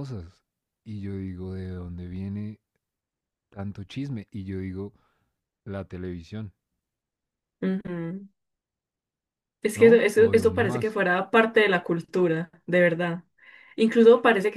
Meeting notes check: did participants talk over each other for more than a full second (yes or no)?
yes